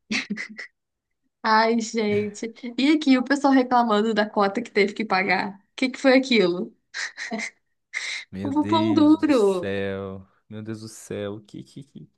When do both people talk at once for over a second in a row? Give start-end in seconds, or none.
8.4-9.7